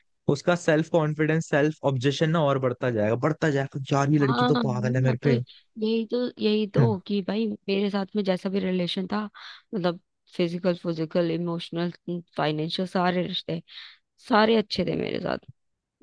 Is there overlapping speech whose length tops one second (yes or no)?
yes